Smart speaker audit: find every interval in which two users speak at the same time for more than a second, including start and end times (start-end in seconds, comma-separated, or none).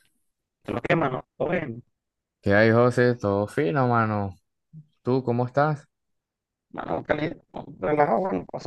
none